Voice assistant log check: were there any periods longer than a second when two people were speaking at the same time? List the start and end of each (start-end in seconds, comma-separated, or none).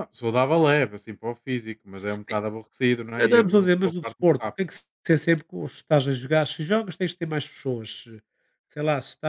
3.2-4.7